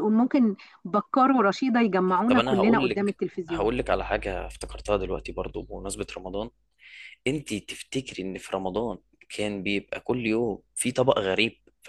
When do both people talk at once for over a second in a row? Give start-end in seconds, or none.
2.3-3.7